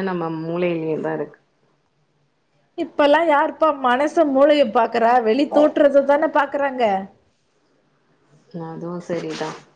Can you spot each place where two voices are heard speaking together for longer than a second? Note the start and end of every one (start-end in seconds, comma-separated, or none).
none